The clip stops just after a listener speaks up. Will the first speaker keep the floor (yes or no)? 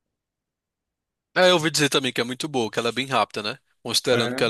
yes